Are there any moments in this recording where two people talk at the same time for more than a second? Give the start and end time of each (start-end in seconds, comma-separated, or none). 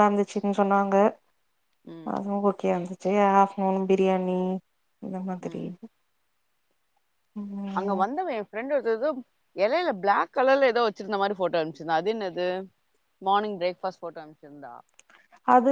none